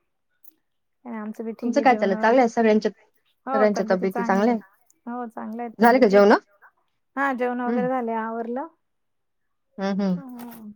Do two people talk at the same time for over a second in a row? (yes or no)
yes